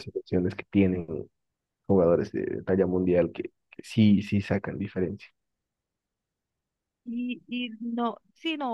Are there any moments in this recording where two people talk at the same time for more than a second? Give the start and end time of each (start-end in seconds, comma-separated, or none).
none